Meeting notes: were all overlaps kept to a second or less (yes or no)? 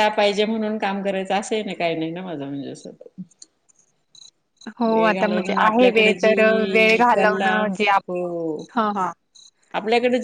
no